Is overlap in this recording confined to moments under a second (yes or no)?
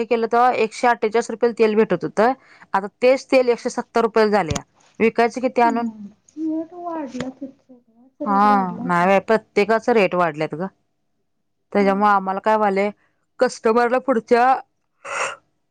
yes